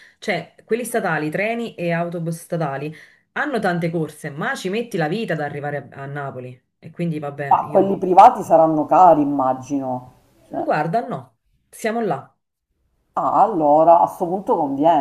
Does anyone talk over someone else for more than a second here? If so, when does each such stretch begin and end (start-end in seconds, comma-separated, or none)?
none